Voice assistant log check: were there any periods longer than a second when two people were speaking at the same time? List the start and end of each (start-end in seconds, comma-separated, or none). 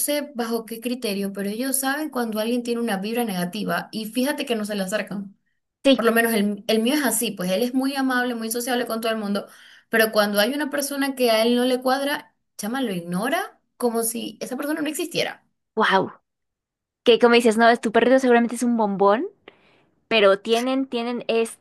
none